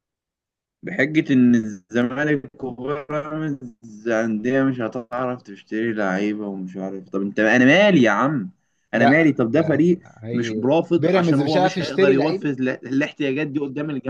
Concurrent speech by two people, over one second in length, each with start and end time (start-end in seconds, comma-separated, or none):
8.9-12.5